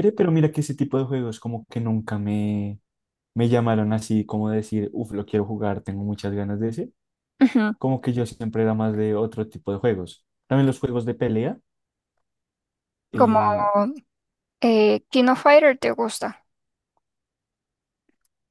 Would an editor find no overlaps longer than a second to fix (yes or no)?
yes